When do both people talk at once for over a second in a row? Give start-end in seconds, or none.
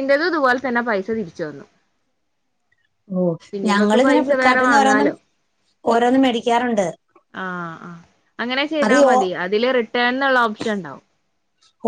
3.7-5.1